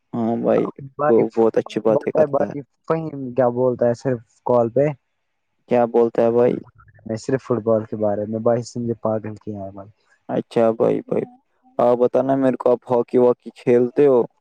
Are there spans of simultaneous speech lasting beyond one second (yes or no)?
no